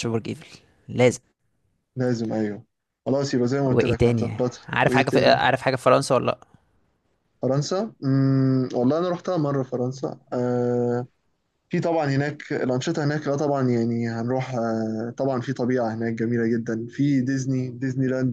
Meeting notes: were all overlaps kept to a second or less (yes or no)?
no